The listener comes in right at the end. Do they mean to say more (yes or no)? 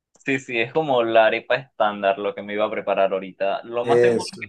no